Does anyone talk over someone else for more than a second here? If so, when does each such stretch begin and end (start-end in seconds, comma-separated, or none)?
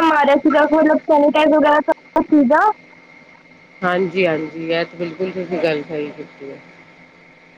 none